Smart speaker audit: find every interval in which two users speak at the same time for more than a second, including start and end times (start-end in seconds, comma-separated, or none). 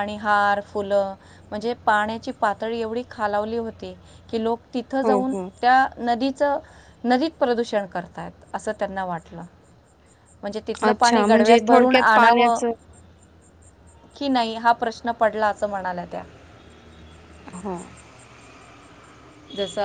10.9-12.6